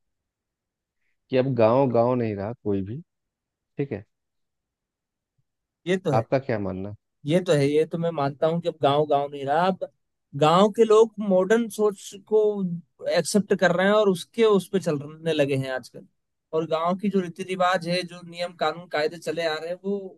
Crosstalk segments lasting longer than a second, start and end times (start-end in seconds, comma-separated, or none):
none